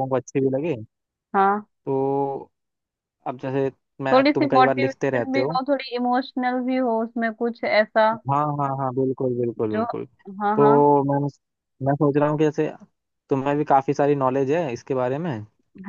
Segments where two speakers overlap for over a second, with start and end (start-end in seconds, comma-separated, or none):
4.1-5.6